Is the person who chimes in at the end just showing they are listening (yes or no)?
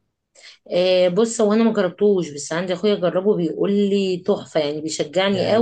no